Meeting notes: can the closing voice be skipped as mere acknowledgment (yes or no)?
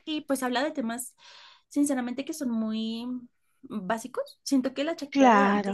yes